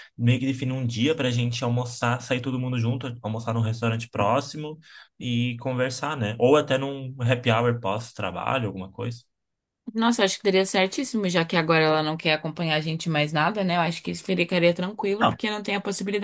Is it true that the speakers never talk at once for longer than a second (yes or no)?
yes